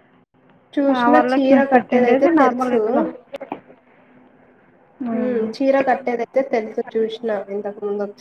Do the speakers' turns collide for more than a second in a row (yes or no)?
yes